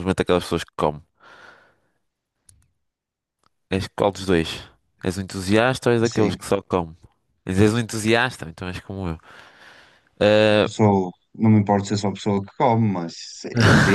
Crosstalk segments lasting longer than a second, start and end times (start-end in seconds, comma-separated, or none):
none